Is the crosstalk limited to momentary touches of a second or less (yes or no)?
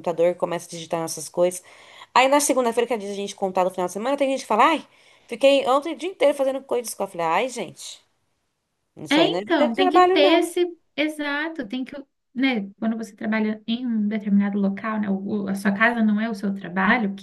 no